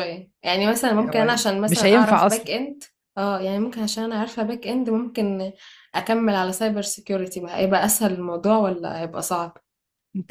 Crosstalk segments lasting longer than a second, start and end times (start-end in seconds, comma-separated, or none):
1.0-2.5